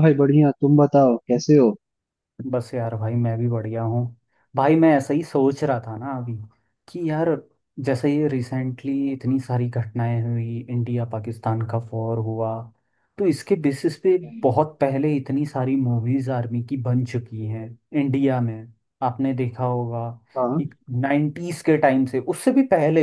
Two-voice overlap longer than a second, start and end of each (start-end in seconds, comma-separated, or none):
none